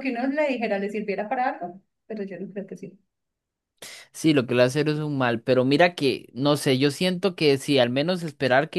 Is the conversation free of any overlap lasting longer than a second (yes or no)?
yes